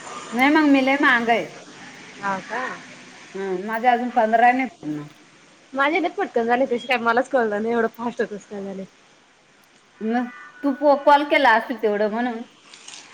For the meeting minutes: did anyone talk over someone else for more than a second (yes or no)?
no